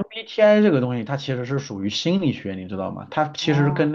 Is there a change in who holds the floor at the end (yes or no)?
no